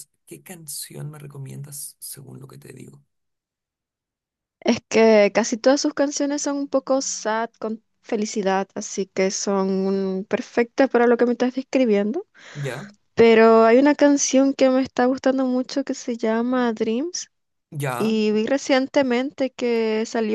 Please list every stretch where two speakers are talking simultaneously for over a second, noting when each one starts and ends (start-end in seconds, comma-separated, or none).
none